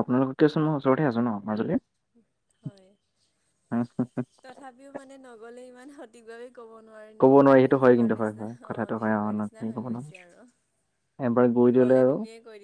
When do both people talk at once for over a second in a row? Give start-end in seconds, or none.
7.2-10.2